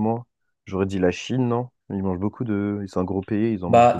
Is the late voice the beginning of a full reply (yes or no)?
yes